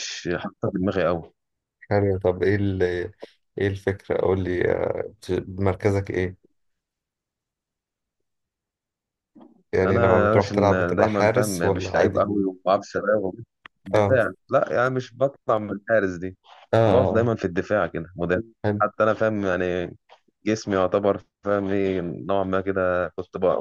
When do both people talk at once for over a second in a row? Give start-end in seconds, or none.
9.8-12.2